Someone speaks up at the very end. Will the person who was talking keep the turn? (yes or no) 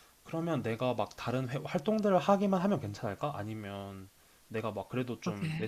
yes